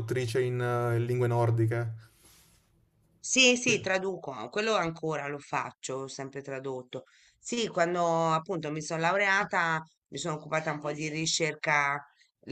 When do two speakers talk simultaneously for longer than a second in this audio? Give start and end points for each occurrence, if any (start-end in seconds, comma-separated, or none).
none